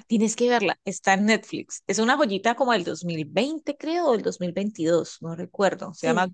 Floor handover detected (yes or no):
no